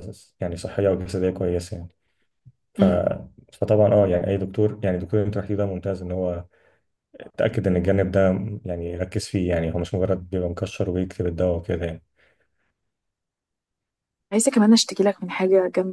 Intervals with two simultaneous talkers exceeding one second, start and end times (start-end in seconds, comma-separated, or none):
none